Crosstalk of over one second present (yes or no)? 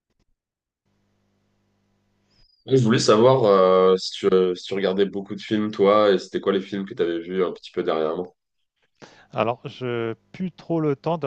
no